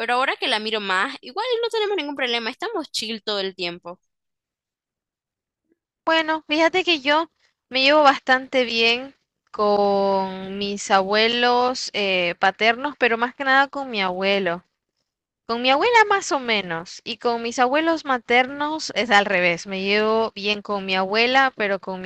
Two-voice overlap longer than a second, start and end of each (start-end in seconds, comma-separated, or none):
none